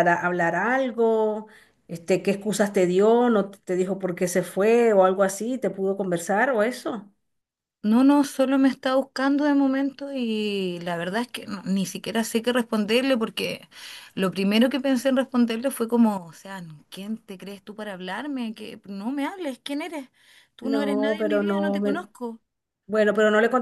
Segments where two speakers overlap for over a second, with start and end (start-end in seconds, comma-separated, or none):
20.6-22.1